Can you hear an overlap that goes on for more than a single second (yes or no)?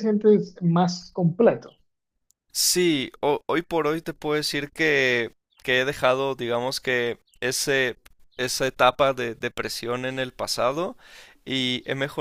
no